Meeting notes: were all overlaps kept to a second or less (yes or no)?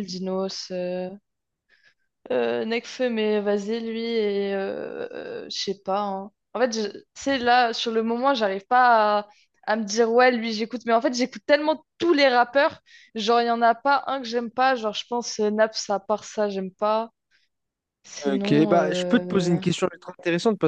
no